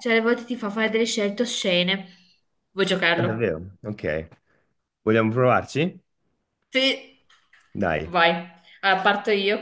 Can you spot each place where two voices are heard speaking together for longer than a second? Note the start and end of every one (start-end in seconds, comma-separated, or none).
none